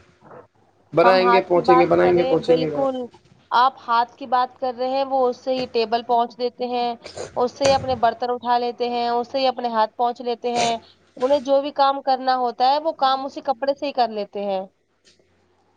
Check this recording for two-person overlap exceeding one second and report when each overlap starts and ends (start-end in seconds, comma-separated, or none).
1.0-2.8